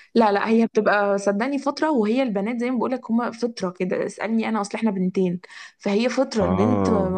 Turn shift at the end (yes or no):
no